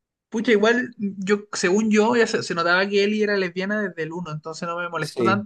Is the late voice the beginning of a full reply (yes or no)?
no